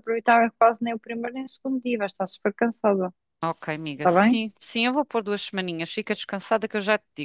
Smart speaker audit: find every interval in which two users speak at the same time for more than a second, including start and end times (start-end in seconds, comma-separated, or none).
none